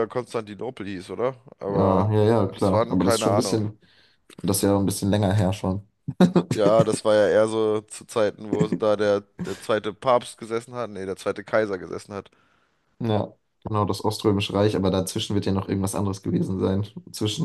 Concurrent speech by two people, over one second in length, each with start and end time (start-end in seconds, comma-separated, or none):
1.7-3.7